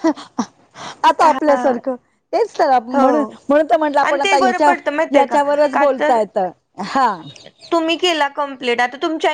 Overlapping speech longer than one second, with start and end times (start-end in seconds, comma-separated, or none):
4.1-6.1